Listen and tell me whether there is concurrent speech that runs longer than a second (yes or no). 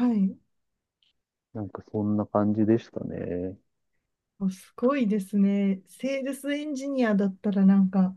no